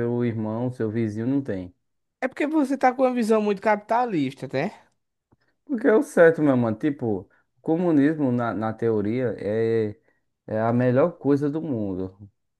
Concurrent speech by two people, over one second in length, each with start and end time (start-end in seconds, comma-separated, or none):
none